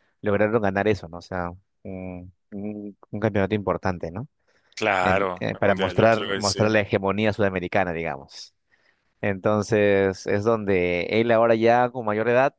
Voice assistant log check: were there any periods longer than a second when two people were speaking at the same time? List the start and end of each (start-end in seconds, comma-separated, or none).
5.0-6.6